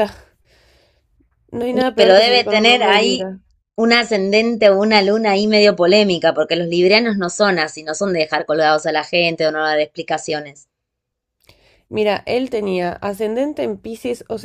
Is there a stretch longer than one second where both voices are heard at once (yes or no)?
yes